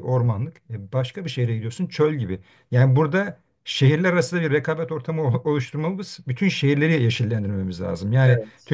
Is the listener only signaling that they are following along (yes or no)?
yes